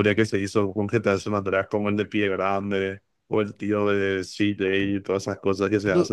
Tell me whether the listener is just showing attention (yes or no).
no